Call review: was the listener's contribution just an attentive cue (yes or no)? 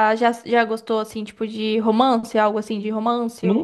no